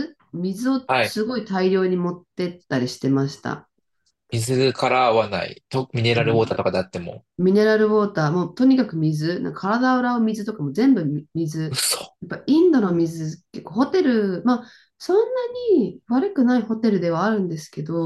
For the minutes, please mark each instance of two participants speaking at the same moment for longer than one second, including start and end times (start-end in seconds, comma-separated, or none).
none